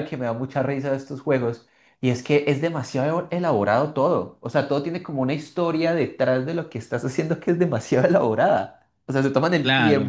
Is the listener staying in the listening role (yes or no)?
yes